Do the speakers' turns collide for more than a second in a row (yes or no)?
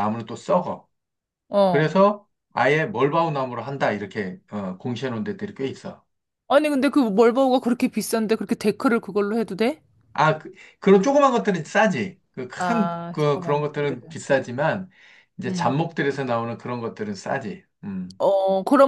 yes